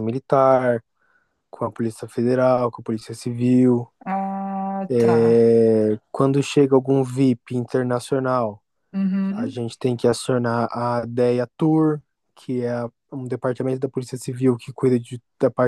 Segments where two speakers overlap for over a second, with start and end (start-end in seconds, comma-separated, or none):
none